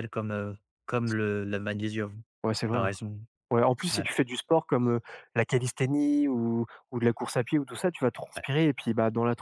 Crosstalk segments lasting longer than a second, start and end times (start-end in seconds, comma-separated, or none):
none